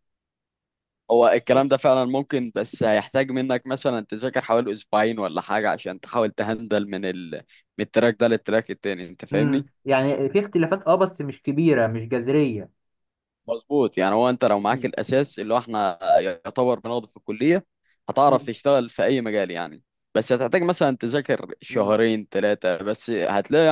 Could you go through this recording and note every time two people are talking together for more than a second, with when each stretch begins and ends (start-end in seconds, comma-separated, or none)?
none